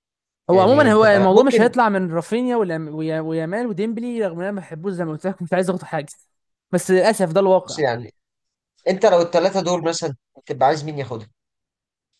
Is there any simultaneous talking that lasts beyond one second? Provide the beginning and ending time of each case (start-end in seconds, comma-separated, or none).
0.5-1.7